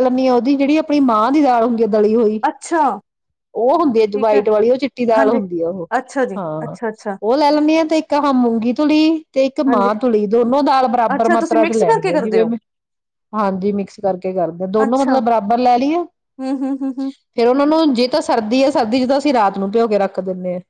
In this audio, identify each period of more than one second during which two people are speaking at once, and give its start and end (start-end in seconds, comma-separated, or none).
11.1-12.4